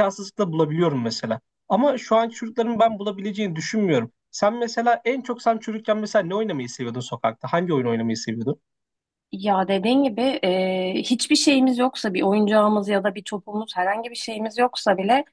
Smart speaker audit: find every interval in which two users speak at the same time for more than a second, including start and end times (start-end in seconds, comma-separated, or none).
none